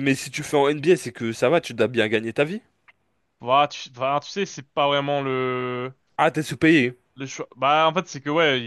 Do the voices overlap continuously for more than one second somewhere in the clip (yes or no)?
no